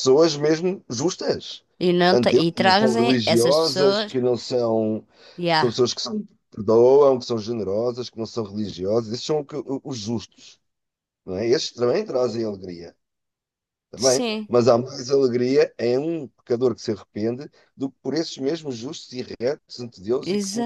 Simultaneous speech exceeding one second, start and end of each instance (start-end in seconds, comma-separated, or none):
2.1-4.2